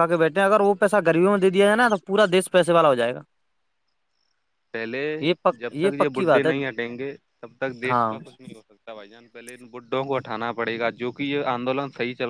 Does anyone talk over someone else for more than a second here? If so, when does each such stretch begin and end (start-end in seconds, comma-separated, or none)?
none